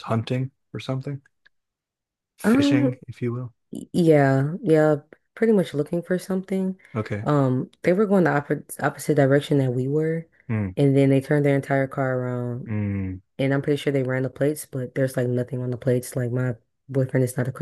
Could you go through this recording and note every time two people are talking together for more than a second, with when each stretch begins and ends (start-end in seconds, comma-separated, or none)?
none